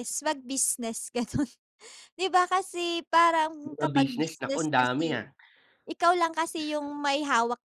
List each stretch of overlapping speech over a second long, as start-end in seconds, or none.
3.6-5.2